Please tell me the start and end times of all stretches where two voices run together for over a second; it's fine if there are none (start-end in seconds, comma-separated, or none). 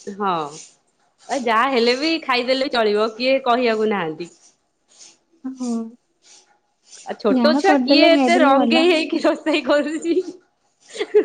7.4-8.8